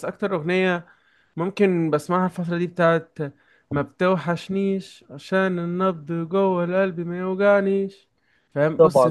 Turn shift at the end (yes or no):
no